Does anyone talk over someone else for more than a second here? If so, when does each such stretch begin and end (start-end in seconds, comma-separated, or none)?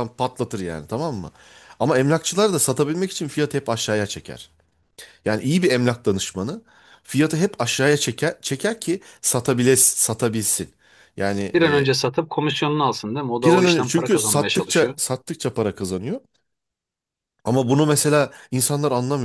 13.4-14.9